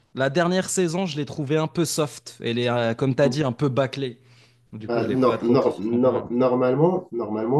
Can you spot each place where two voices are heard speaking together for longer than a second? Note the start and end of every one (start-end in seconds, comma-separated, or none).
4.8-6.1